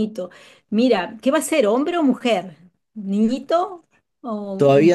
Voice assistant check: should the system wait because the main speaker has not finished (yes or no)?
no